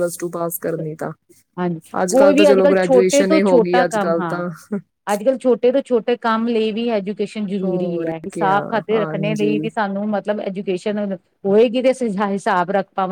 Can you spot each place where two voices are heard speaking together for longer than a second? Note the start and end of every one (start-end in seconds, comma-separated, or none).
2.0-4.4, 7.6-9.7